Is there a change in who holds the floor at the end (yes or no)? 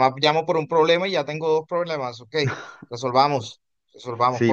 yes